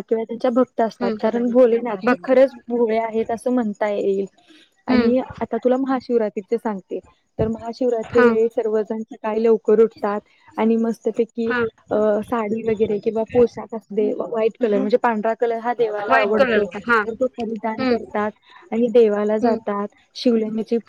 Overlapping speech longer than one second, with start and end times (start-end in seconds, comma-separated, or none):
none